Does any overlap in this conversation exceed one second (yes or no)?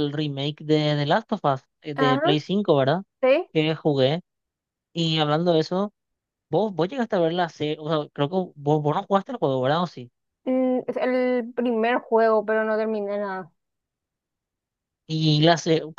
no